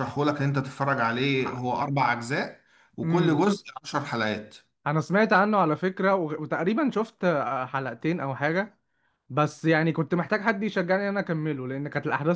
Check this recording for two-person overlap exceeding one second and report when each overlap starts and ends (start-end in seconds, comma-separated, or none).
none